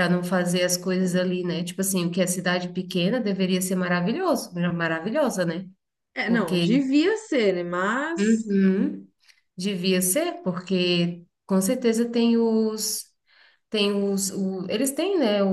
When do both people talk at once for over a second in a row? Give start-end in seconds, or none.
none